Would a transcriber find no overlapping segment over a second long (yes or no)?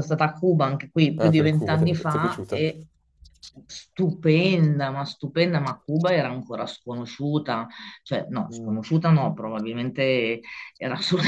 no